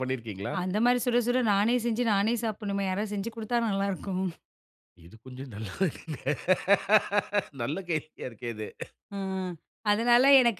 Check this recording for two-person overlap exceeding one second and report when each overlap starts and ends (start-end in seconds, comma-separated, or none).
none